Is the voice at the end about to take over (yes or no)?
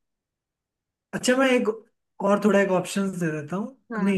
no